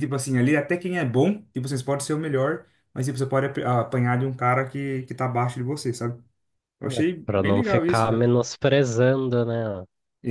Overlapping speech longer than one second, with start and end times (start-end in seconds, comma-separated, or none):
6.8-8.3